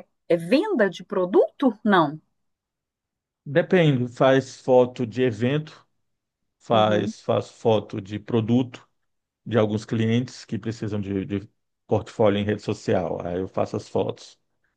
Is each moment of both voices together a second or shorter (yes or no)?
yes